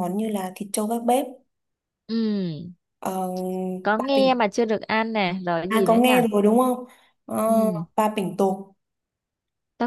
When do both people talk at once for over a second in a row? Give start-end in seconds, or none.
none